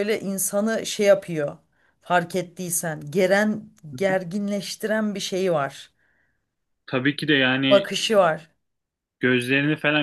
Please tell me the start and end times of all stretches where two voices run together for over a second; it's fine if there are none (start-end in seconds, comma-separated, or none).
none